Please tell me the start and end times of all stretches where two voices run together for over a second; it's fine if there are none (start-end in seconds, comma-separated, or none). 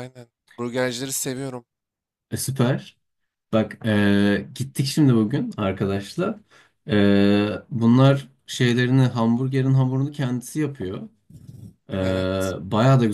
none